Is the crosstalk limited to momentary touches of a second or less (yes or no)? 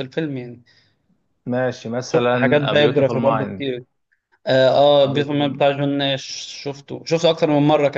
no